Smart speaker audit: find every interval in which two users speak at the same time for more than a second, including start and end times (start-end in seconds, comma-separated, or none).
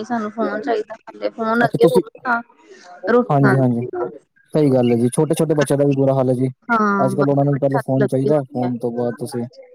7.0-8.7